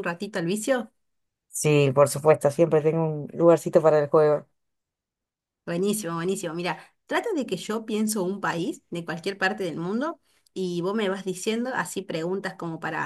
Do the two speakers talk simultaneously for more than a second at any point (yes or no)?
no